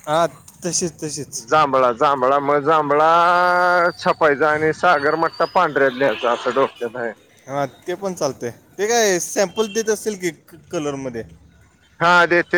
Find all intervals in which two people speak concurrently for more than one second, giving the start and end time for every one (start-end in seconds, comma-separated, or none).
none